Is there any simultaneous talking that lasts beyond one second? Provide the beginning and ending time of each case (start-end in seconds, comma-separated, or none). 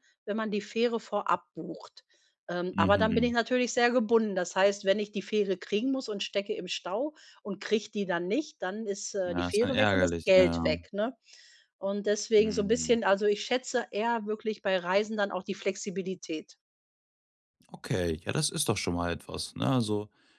9.2-10.7